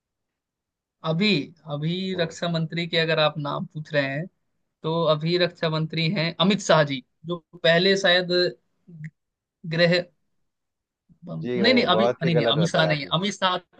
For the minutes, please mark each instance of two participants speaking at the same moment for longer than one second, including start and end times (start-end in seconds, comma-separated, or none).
11.4-13.1